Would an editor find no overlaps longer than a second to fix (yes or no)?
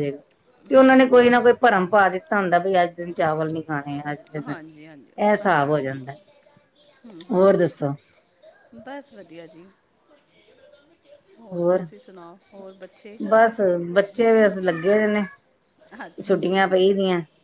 no